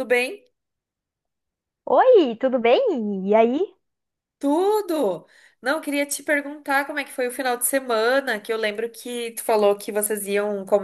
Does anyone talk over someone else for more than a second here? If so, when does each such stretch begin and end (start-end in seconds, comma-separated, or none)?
none